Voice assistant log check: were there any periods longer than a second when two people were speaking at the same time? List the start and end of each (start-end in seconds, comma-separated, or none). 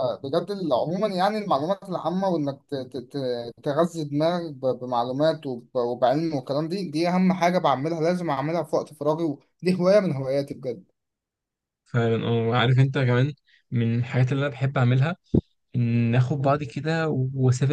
none